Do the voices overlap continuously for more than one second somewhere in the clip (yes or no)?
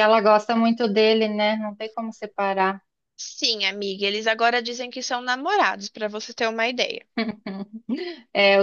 no